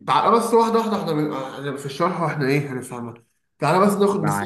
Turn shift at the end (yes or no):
no